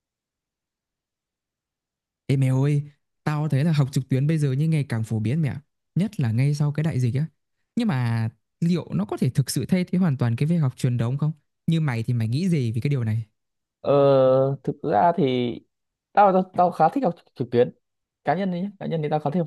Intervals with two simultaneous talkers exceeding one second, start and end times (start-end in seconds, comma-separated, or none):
none